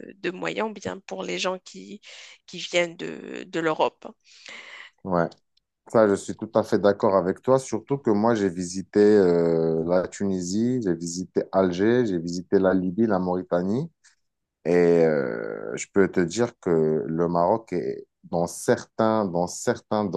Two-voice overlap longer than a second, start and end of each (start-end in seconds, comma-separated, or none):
none